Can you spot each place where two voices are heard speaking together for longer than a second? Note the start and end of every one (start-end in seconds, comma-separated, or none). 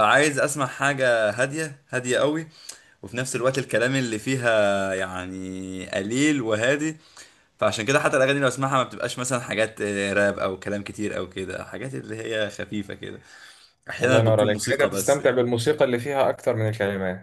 14.0-15.4